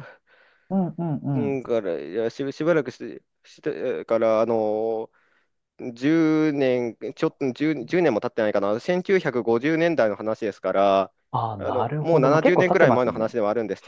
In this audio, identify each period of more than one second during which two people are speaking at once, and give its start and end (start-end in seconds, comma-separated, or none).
11.6-13.4